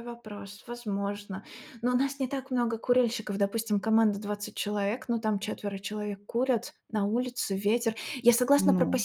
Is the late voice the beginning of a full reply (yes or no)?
no